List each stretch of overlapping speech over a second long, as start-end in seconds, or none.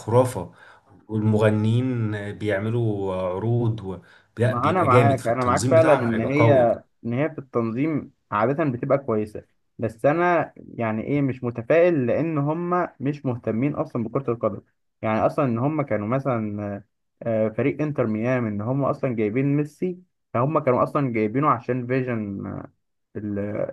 4.5-6.5